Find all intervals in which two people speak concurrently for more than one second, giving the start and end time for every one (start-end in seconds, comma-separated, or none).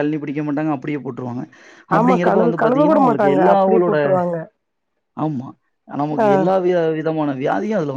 2.0-4.0